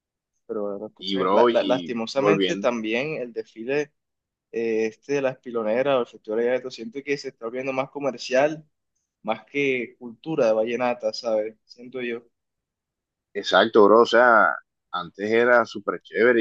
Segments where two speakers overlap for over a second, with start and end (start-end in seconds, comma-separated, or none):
1.0-2.7